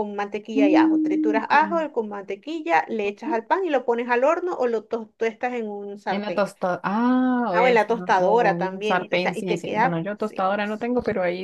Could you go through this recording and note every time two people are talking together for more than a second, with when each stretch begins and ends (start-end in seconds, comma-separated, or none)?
0.6-1.9, 7.5-10.6